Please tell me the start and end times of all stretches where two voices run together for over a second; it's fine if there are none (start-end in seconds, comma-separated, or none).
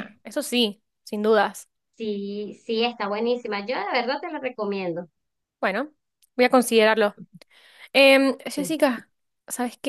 none